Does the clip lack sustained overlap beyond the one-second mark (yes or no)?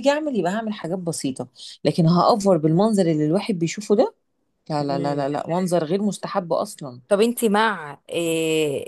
yes